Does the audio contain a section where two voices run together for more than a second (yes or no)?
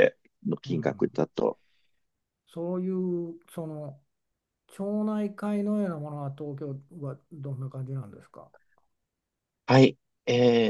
no